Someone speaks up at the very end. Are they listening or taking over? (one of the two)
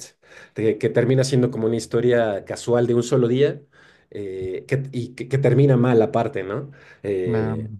listening